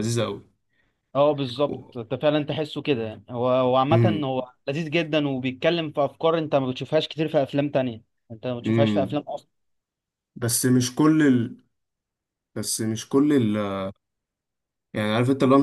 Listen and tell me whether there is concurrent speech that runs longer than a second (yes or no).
no